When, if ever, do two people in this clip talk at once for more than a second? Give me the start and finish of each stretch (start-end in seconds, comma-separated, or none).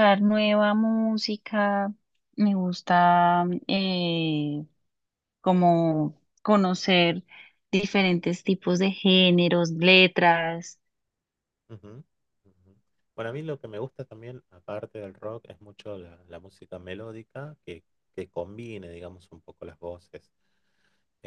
none